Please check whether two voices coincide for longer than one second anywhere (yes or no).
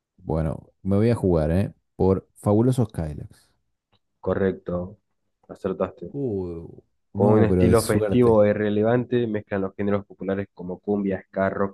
yes